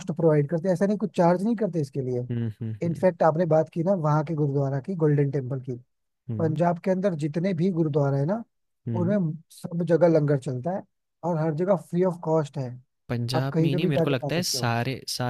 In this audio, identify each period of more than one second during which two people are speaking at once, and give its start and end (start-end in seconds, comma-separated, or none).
13.3-14.7